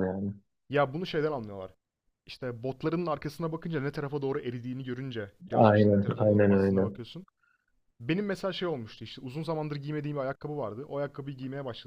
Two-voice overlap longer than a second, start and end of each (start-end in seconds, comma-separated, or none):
5.5-6.9